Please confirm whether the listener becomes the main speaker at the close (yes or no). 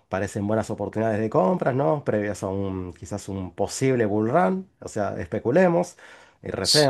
no